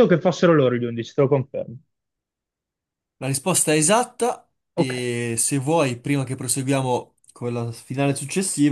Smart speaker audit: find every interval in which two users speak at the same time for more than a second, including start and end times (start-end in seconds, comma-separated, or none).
none